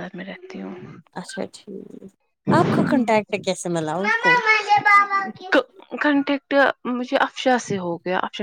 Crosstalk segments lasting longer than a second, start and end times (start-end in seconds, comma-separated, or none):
none